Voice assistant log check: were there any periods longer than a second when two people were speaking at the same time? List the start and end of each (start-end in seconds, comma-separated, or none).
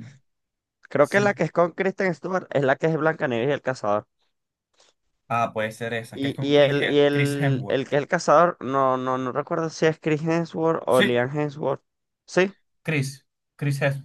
6.1-7.8